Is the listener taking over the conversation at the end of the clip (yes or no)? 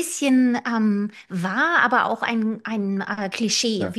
no